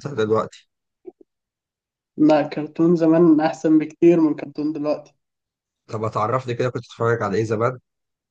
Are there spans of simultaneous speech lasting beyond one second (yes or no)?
no